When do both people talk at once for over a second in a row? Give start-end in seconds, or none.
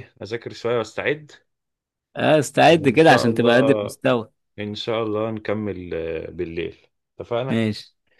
2.7-3.9